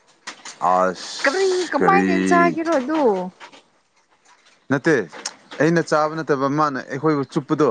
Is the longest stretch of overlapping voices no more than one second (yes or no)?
no